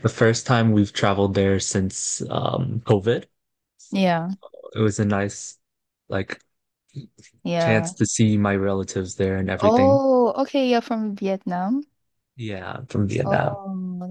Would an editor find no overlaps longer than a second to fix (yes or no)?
yes